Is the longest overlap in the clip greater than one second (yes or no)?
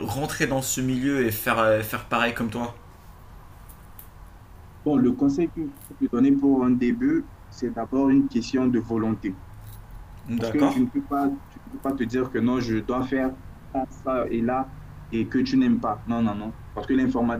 no